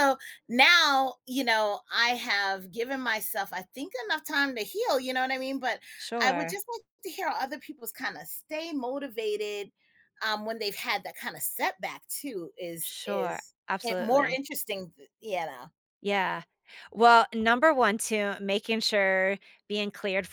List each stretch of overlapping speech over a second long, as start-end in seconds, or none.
12.8-14.4